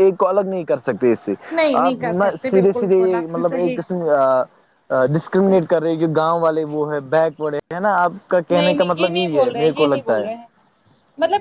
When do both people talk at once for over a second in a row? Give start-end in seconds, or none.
1.8-3.8, 8.5-10.3